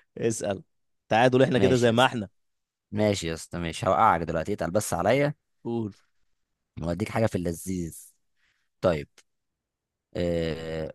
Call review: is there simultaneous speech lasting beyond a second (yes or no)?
no